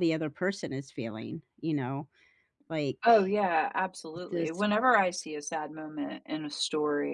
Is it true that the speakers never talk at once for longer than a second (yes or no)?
yes